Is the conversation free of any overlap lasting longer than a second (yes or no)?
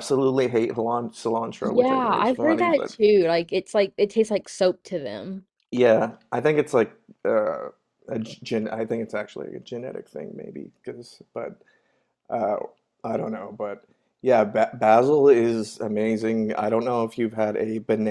no